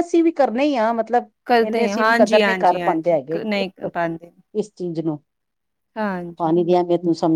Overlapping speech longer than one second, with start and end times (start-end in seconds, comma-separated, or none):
1.7-3.4